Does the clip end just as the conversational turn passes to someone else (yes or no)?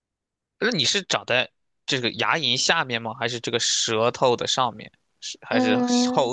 yes